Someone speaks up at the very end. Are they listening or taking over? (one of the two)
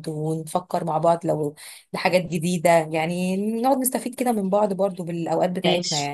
taking over